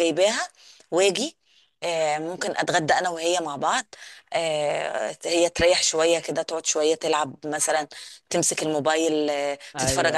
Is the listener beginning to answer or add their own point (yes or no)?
yes